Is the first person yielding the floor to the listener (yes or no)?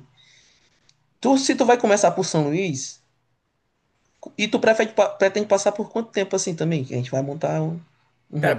yes